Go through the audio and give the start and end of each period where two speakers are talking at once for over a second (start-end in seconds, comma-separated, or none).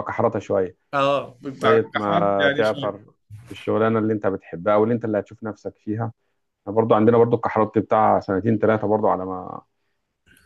1.6-3.0